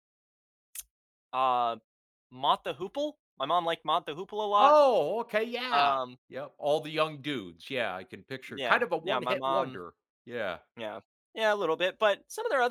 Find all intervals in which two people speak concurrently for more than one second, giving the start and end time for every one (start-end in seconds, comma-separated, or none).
8.5-9.8